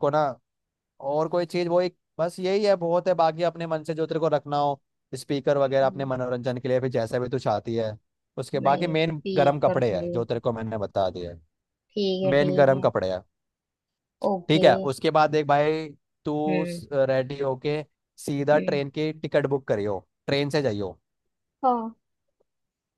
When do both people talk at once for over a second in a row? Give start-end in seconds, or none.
8.6-10.1